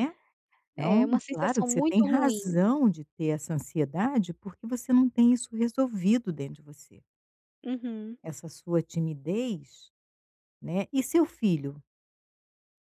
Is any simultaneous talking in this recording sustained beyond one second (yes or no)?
yes